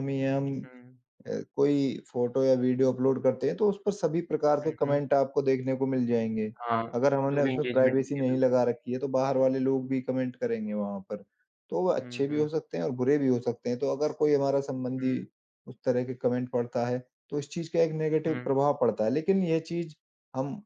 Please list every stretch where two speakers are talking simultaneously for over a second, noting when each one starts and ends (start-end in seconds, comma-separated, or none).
7.3-8.6